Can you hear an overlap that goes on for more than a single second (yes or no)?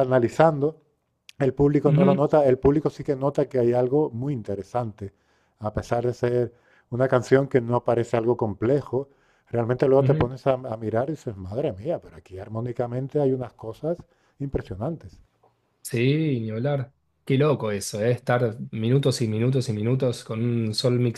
no